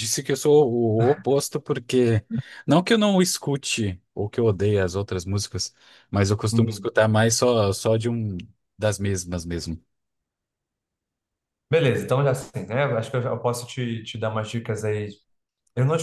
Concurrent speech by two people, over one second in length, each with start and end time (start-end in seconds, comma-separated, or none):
none